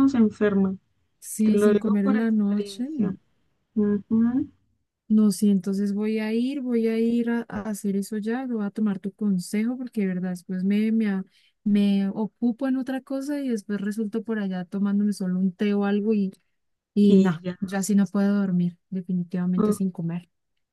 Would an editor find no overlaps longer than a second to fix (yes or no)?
no